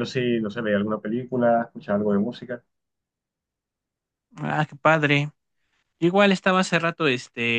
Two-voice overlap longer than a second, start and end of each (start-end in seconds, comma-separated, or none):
none